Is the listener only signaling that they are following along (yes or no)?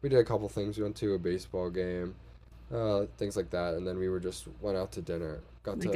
yes